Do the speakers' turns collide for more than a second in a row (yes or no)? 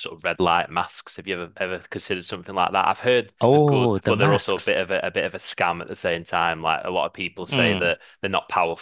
yes